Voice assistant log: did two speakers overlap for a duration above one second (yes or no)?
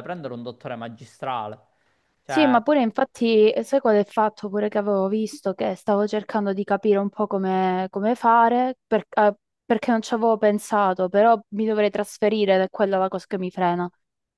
no